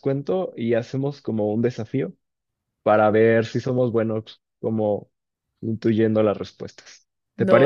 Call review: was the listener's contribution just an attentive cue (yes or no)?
no